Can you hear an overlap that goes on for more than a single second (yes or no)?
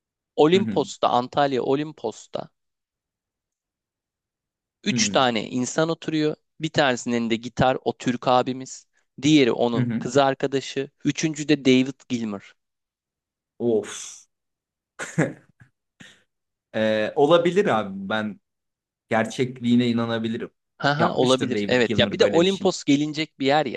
yes